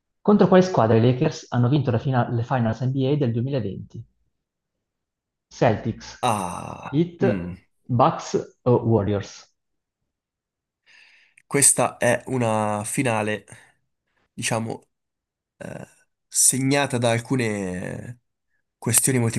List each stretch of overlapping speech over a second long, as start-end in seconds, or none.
none